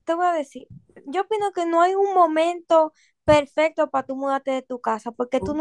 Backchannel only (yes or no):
yes